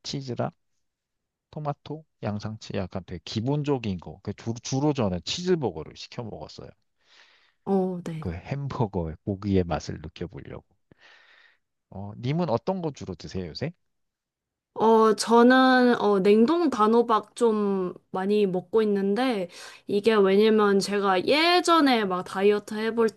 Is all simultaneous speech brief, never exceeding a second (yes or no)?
yes